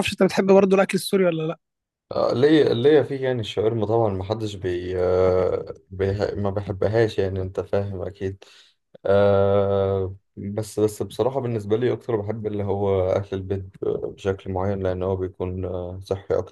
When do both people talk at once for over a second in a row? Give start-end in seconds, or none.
none